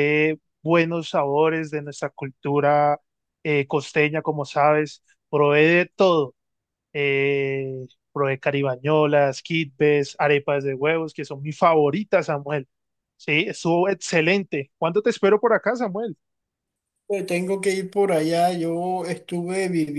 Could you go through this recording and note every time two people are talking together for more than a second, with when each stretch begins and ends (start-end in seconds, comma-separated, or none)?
none